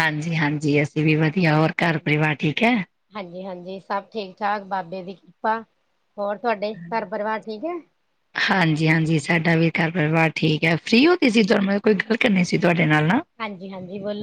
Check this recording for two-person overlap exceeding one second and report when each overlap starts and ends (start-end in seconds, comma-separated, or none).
none